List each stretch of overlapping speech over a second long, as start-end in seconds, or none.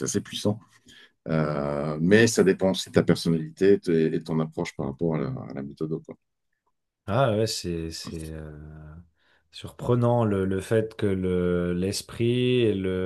none